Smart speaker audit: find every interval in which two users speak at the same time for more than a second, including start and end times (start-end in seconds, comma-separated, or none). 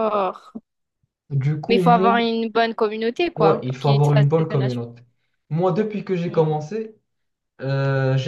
3.4-4.8